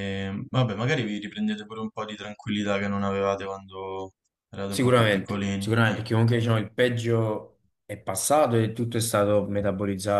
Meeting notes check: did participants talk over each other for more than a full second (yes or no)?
yes